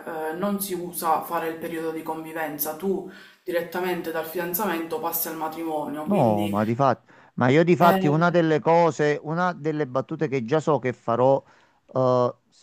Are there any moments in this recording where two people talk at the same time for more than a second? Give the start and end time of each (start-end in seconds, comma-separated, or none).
none